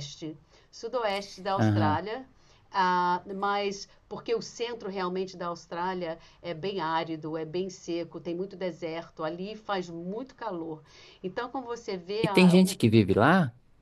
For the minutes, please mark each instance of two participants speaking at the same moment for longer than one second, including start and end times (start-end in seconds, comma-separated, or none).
none